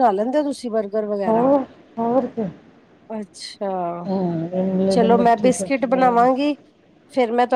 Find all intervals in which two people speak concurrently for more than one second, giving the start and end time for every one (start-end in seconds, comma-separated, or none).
4.9-6.5